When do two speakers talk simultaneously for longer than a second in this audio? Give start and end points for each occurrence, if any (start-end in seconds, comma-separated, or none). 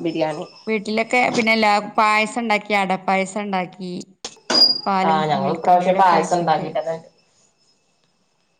5.1-6.7